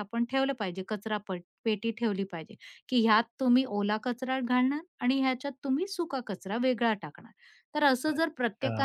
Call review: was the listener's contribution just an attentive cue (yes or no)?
yes